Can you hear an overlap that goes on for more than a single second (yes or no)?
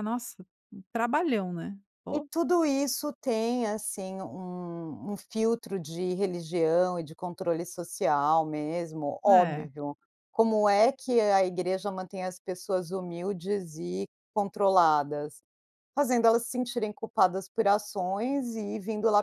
no